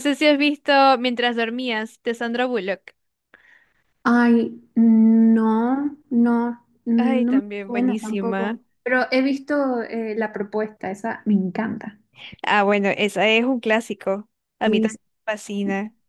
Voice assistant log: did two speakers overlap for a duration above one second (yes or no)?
yes